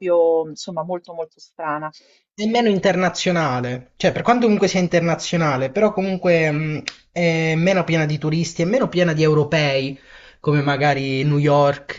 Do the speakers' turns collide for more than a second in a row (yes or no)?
no